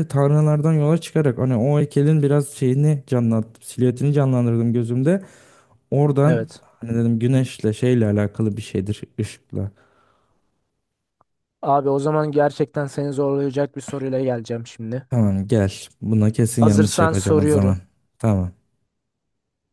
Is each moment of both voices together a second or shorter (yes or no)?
no